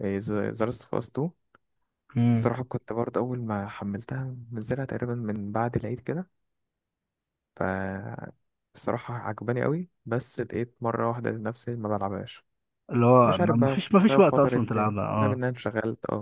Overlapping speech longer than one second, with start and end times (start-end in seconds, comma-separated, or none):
13.2-15.4